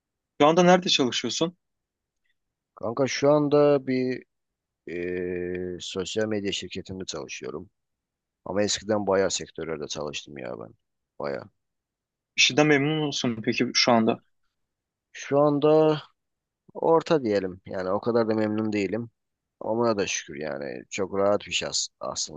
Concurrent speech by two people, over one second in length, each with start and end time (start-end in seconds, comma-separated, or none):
none